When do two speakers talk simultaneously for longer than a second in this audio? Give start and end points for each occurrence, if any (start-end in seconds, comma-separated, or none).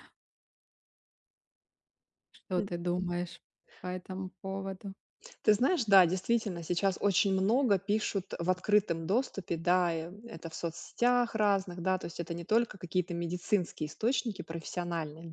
none